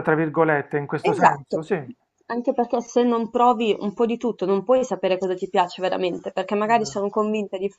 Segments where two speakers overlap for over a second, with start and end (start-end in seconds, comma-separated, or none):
none